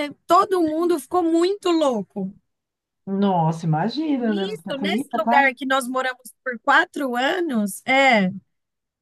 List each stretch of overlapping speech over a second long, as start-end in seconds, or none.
4.2-5.5